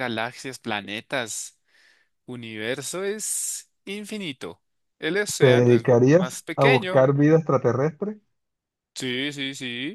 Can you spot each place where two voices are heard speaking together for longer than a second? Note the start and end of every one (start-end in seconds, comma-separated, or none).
5.4-7.0